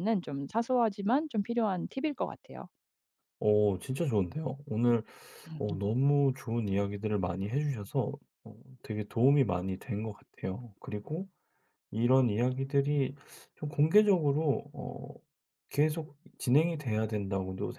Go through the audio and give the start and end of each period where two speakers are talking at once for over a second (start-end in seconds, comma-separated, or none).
none